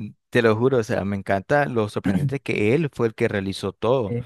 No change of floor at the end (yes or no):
yes